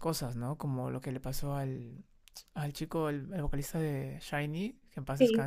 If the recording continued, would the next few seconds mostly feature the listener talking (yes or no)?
yes